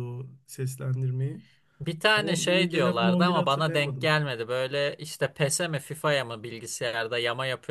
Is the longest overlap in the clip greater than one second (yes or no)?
yes